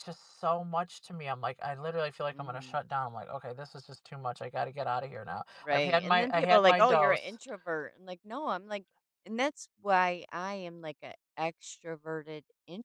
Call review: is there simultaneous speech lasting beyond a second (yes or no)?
yes